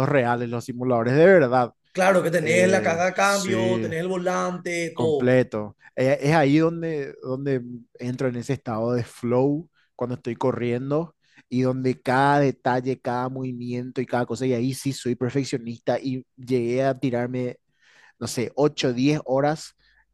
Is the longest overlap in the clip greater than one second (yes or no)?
yes